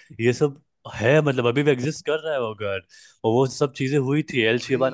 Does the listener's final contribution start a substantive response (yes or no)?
no